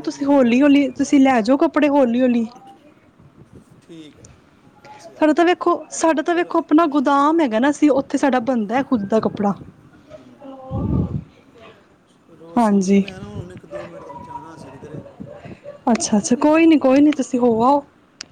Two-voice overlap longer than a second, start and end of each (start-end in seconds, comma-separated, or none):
none